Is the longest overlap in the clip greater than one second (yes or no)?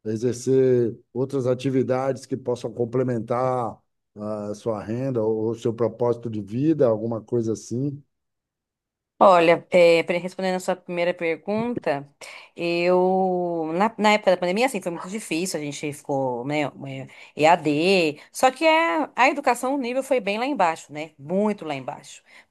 no